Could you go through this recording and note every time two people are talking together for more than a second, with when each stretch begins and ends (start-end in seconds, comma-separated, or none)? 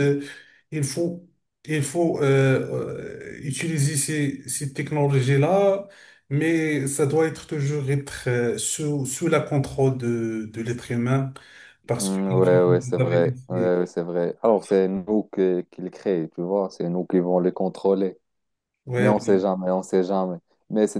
12.0-13.7